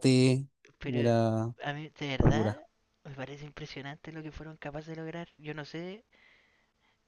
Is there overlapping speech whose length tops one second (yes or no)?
no